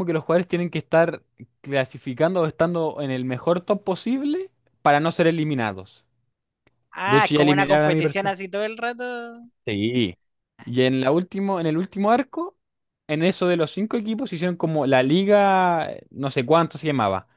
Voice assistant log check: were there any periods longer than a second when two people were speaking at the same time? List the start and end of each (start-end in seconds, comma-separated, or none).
7.1-8.3